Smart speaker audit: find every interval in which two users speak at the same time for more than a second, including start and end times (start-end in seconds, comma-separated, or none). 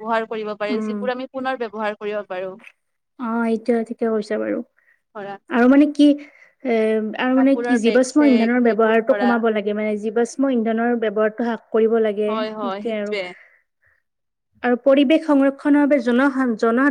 7.4-9.3